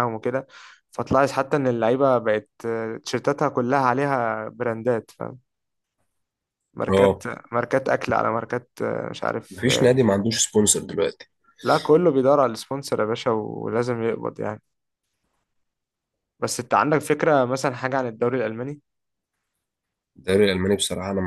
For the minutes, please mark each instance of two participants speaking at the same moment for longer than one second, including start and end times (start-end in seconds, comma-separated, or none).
none